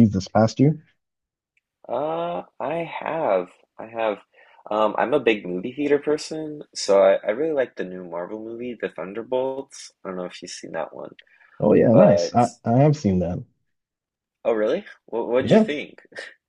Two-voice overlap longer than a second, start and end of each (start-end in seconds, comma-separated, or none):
none